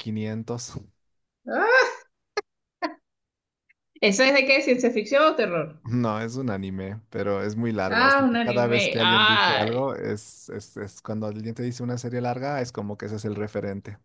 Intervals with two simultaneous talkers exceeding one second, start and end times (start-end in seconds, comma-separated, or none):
7.9-9.9